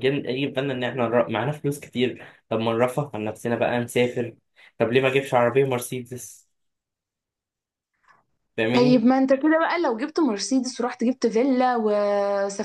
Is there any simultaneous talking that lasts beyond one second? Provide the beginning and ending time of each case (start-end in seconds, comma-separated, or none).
none